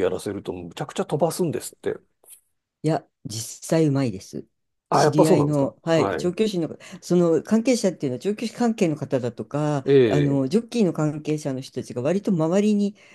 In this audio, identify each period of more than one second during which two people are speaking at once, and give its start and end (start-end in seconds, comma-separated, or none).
4.9-6.3